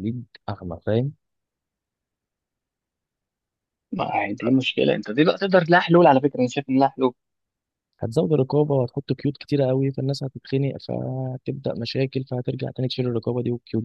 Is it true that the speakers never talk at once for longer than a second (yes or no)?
yes